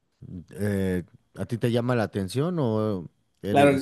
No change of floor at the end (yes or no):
no